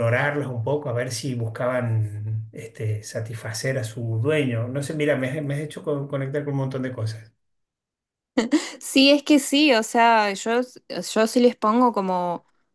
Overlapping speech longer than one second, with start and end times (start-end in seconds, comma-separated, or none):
none